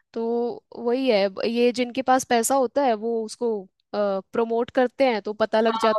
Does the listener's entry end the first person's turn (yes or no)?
yes